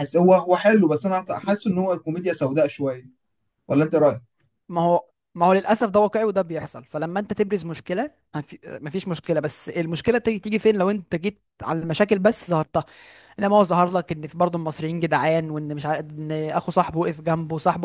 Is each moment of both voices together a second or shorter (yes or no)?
yes